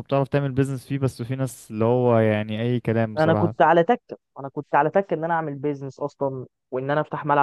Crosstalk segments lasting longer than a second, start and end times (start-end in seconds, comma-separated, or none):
none